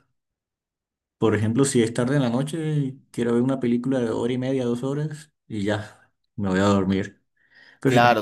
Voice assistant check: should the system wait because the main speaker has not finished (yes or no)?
no